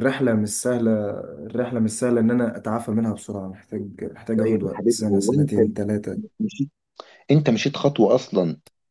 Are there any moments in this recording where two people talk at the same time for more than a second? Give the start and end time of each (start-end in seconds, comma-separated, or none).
4.4-5.6